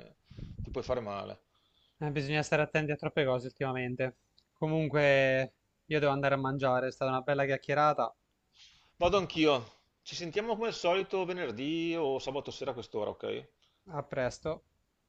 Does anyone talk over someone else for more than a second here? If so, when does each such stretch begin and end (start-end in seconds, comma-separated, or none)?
none